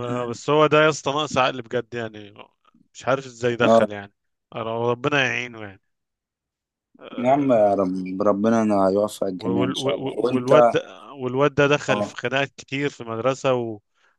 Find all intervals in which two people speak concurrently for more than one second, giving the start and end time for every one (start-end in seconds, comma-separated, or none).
9.4-10.8